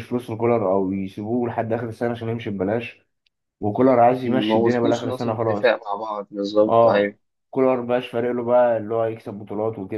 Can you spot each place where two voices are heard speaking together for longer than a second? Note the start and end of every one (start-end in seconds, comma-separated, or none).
4.3-5.7